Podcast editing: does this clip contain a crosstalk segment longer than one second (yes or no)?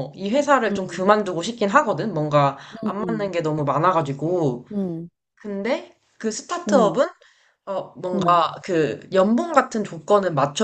no